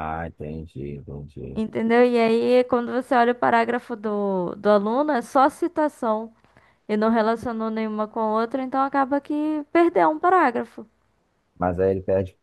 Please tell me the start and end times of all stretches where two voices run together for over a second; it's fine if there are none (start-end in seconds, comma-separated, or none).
none